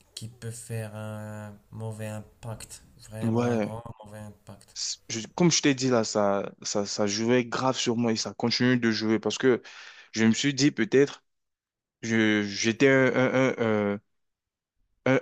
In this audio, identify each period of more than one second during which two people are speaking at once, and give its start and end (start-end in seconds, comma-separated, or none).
none